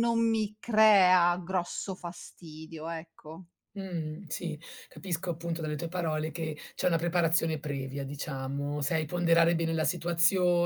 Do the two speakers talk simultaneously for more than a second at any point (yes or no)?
no